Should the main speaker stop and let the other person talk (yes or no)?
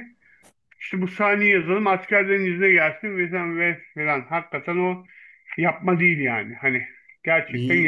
yes